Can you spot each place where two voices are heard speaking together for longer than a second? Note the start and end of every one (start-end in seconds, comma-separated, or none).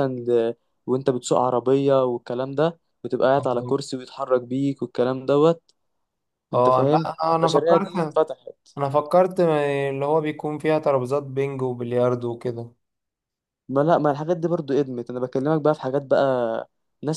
6.5-8.2